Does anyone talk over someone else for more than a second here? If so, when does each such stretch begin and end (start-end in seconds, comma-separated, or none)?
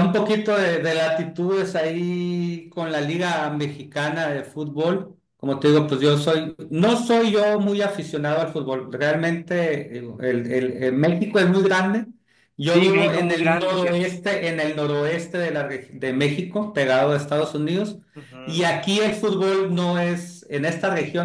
12.6-14.1